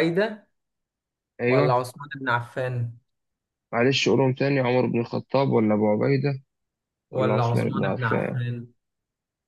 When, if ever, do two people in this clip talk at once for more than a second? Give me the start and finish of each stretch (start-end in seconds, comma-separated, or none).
7.1-8.4